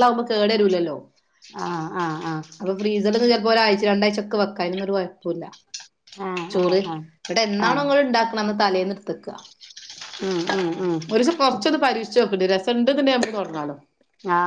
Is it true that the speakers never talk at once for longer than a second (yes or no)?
no